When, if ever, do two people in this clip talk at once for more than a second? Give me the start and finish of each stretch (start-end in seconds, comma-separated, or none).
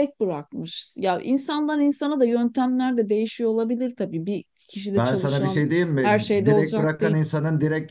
5.0-7.2